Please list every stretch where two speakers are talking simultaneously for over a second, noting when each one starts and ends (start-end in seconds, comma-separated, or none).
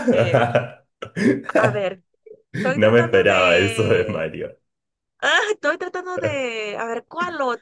2.8-4.3